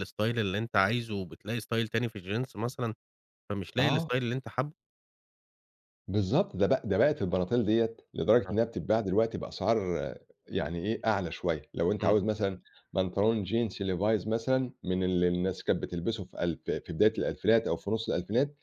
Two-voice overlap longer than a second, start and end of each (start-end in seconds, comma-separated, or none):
none